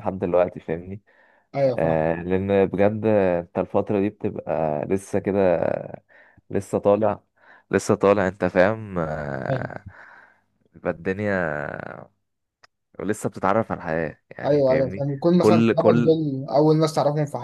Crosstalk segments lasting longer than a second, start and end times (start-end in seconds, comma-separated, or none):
14.4-16.2